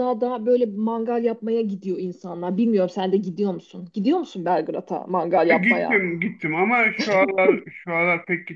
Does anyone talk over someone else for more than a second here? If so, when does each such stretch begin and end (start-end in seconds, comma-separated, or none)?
none